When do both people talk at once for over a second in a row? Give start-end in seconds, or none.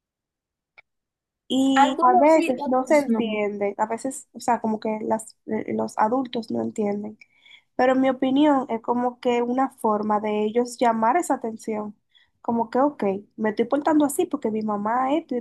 1.7-3.2